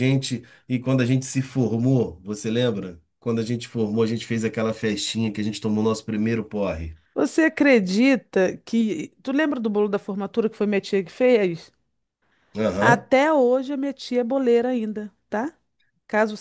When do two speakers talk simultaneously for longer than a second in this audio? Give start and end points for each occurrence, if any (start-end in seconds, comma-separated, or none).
none